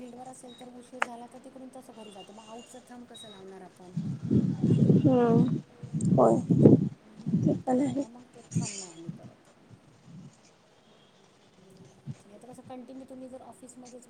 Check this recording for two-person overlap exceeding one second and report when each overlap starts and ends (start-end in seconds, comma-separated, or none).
none